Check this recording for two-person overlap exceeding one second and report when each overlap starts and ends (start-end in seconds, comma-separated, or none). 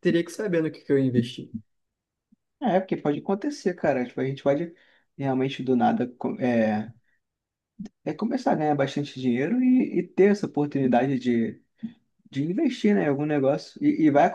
none